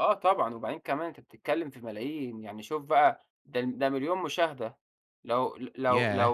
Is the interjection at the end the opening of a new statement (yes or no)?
no